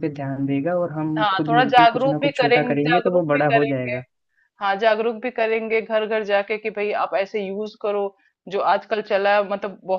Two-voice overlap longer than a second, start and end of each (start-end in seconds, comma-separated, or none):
1.2-4.0